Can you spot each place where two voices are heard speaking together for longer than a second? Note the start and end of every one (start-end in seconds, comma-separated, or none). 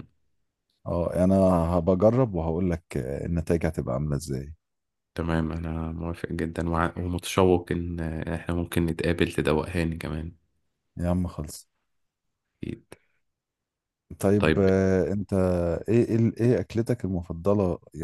none